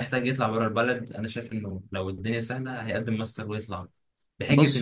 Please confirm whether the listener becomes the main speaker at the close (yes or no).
no